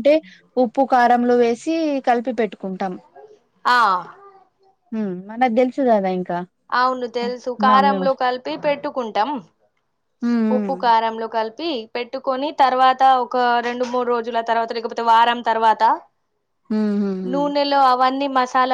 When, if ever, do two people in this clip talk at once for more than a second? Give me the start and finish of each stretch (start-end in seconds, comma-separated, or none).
none